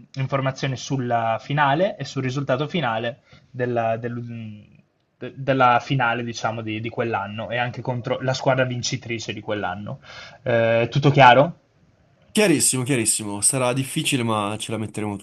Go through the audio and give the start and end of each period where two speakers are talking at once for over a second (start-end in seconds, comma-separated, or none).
none